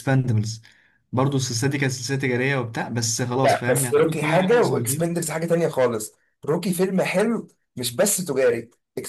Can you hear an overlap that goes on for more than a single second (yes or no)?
yes